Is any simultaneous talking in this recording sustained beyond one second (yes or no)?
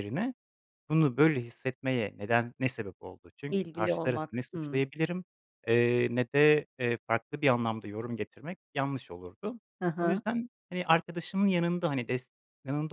yes